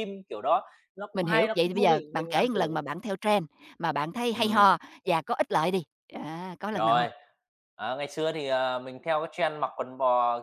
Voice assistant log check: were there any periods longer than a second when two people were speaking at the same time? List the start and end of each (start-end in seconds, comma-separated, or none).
1.1-2.8